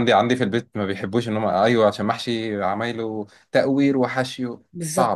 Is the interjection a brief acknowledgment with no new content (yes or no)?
no